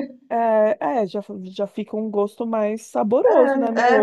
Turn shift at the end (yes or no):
yes